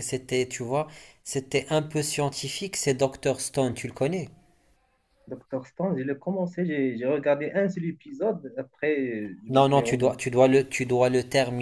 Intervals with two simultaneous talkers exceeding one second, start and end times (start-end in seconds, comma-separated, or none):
none